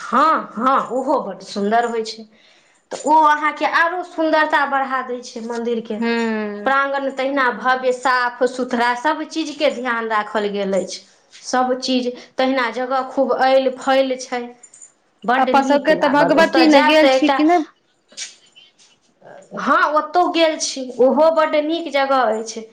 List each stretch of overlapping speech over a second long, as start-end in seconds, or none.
15.4-17.4